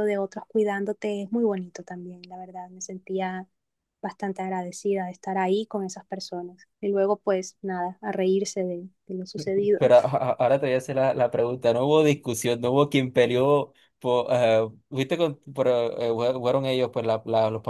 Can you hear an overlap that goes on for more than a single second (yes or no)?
no